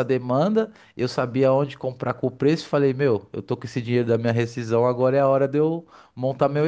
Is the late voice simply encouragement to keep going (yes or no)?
yes